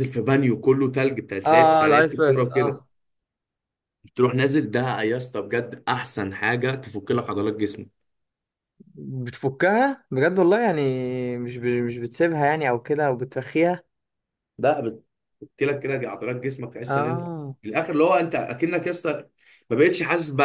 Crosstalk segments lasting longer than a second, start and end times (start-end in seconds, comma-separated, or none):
1.4-2.8